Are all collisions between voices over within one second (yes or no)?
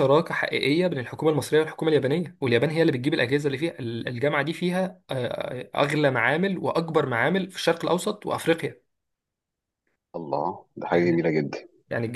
yes